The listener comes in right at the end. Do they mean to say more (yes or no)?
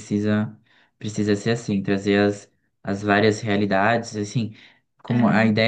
no